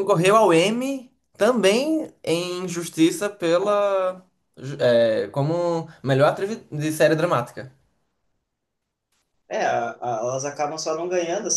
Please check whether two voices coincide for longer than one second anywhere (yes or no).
no